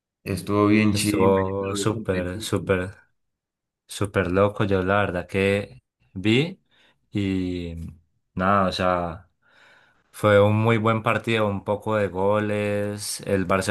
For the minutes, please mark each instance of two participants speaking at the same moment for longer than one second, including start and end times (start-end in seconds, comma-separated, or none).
0.9-2.7